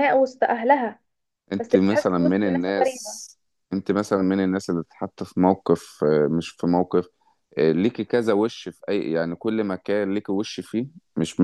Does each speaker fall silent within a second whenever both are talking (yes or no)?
no